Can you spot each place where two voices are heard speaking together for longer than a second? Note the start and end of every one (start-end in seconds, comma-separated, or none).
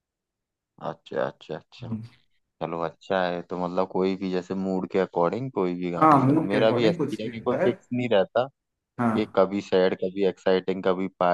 6.0-7.7